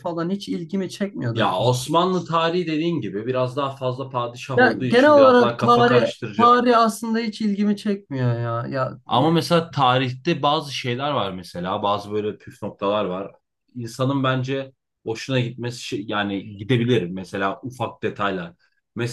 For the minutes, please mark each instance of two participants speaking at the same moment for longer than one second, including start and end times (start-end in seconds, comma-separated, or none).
4.6-6.5